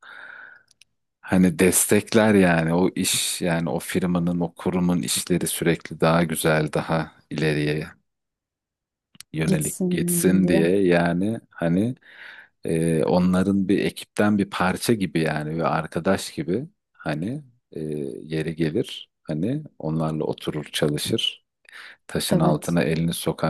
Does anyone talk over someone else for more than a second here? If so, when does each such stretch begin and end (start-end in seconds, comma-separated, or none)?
9.4-10.7